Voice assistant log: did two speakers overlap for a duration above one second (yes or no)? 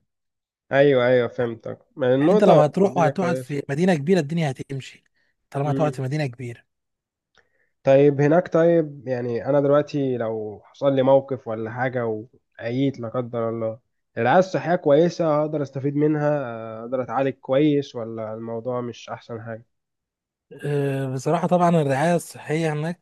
yes